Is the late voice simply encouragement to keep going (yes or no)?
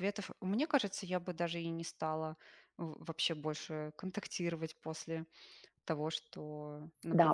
no